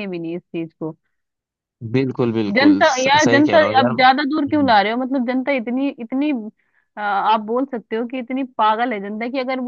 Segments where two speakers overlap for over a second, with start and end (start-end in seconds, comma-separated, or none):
2.5-4.7